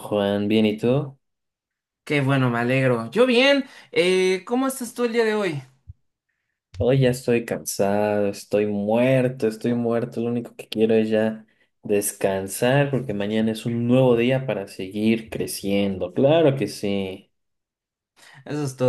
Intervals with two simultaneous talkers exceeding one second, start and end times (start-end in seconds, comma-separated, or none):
none